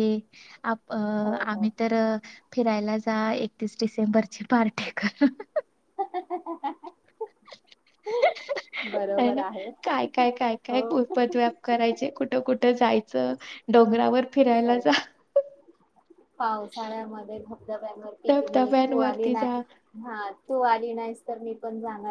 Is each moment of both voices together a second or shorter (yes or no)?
no